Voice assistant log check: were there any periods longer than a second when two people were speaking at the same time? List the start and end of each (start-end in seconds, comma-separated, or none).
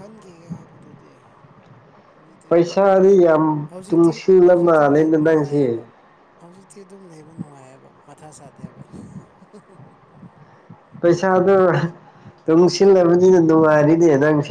3.9-5.6